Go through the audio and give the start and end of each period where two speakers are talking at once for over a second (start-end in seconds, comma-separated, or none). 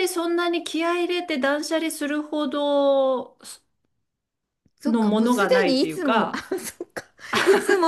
4.8-6.4